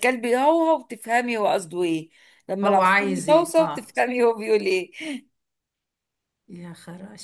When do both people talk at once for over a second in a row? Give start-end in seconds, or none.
2.6-3.9